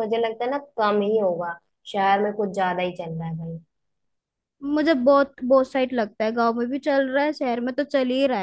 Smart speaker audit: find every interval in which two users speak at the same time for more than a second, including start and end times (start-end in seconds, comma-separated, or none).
none